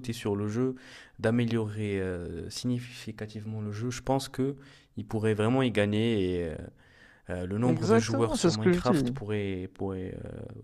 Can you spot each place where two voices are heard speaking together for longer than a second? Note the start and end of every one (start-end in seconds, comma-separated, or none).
7.7-9.2